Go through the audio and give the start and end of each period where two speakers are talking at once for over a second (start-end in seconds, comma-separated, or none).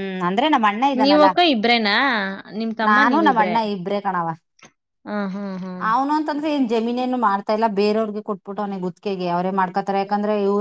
none